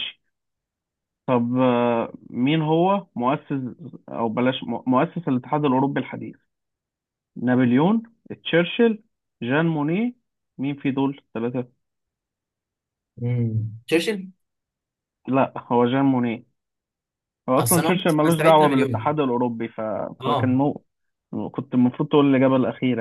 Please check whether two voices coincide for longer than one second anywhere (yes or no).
yes